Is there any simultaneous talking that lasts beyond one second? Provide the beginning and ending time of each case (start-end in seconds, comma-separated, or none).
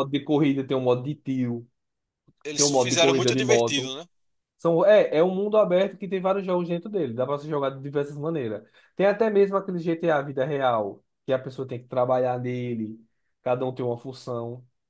2.6-3.9